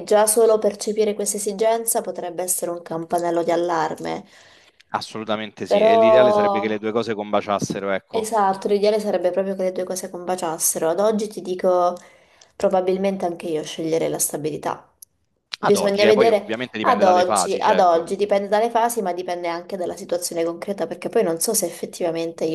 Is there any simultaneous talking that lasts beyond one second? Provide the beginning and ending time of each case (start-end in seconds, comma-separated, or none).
15.6-18.1